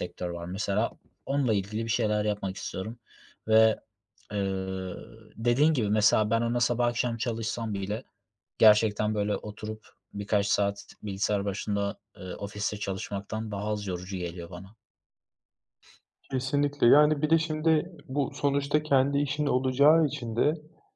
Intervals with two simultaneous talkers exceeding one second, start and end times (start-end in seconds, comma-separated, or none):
none